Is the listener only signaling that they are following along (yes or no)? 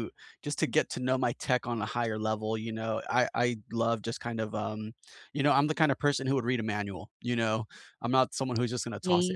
yes